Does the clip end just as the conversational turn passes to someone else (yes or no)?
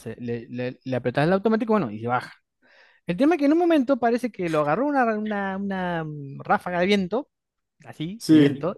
no